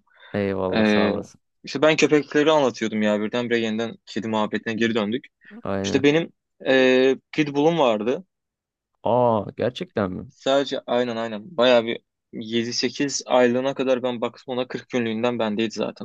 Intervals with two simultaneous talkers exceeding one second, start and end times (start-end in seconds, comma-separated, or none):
none